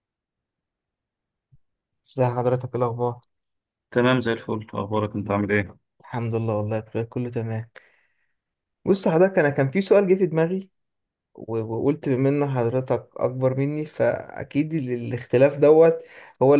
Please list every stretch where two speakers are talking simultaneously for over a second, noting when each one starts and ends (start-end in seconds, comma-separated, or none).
none